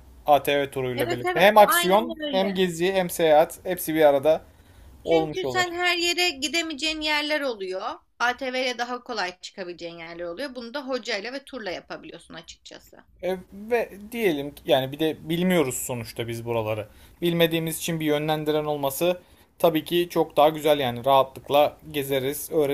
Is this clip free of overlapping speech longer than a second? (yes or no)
no